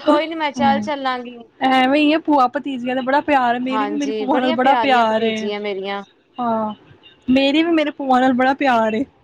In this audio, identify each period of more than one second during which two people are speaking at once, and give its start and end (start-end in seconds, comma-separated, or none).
3.7-5.3